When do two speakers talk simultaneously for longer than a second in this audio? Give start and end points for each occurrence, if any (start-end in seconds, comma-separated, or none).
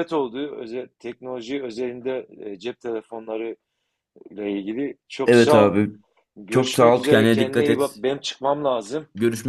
6.5-8.0